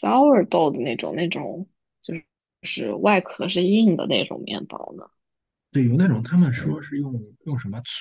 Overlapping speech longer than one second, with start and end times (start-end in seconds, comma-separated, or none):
none